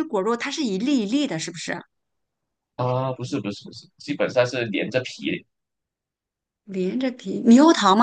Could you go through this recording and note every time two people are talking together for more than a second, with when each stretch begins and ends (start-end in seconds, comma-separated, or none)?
none